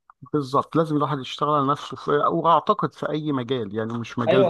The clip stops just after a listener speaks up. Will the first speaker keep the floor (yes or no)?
no